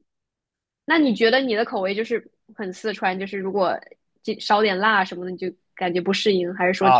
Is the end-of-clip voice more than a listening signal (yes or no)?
yes